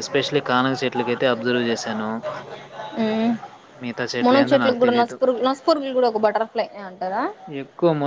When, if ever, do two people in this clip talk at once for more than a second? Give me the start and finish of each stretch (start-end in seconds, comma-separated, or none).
none